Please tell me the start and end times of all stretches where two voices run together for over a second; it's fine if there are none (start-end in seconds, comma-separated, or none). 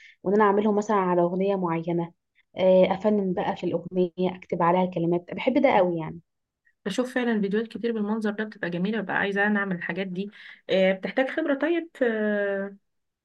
none